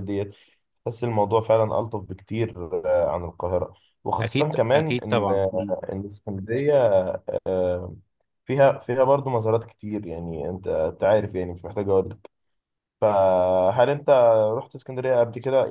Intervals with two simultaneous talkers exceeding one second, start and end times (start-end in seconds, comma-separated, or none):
4.2-5.7